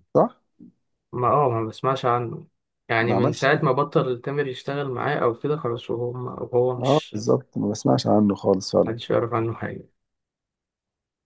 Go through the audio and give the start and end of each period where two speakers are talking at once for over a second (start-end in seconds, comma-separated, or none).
none